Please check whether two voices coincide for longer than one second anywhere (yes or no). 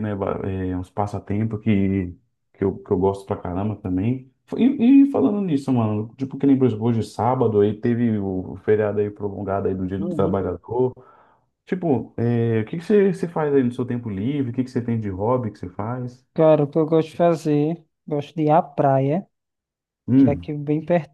no